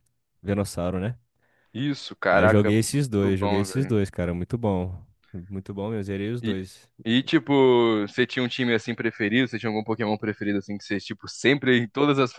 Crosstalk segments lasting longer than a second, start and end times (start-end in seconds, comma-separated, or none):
2.3-3.9